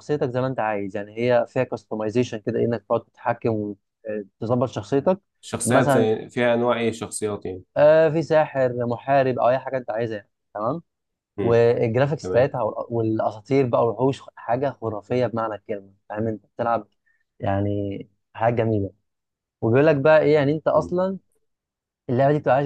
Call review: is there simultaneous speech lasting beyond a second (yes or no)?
no